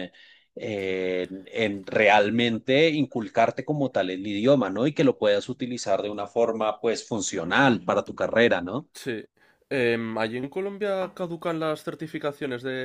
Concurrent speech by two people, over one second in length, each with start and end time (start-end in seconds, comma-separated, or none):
none